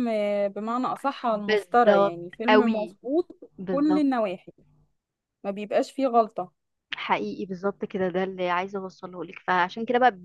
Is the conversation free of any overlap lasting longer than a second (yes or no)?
no